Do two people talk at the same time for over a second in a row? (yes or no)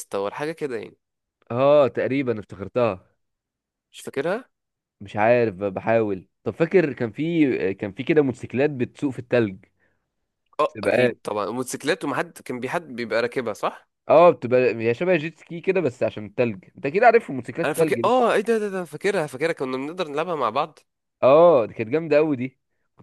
no